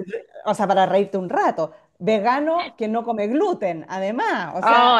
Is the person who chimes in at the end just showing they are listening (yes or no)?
no